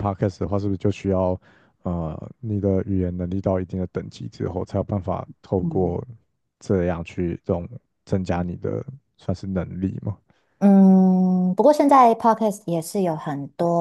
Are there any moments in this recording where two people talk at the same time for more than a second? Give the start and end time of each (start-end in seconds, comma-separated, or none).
none